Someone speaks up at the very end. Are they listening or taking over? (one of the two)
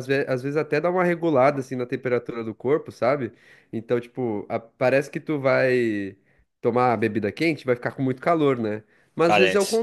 listening